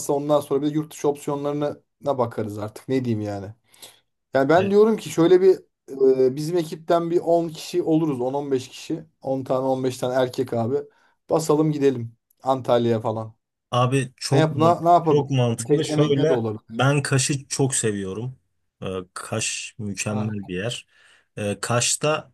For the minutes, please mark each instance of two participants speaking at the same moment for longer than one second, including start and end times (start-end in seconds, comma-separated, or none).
14.3-16.8